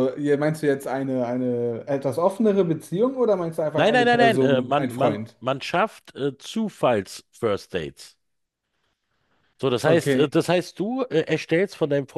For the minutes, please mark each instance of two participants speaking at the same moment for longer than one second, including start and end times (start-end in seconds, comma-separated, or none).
3.7-5.4